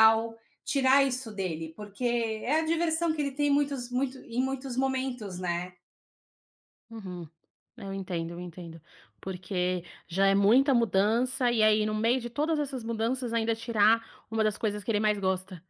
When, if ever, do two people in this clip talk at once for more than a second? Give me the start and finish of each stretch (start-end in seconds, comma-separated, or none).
none